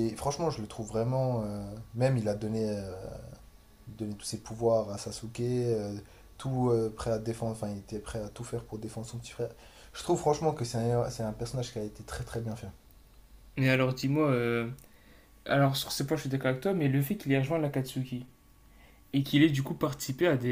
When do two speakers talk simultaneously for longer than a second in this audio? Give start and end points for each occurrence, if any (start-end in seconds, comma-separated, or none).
none